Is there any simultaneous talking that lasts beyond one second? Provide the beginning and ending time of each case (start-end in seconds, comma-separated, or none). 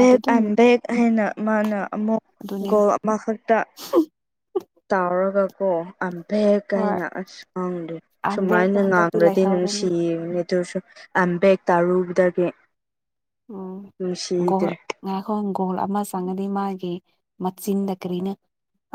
8.3-9.9